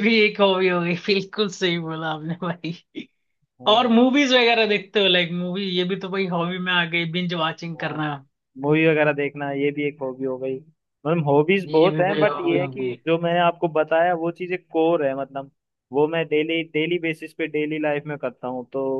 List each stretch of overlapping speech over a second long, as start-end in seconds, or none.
11.7-13.0